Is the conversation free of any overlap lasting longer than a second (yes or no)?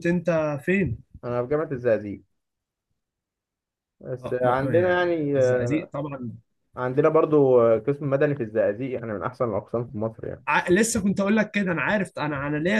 no